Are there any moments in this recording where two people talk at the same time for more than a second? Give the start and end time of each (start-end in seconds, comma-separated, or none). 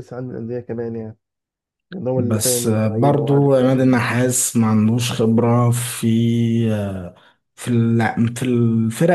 2.2-4.0